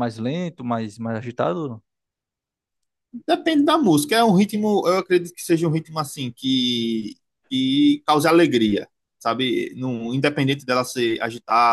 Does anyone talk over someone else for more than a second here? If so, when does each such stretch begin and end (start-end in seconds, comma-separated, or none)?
none